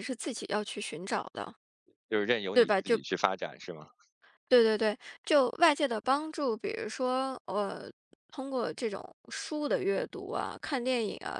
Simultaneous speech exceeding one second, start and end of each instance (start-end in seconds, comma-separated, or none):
none